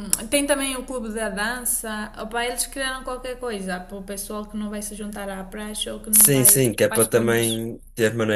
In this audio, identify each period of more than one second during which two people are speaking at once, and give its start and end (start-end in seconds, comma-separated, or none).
6.1-7.7